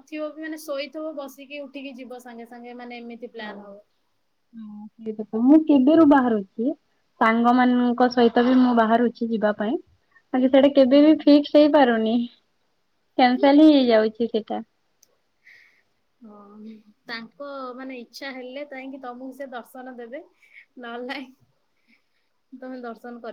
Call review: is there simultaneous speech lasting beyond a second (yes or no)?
no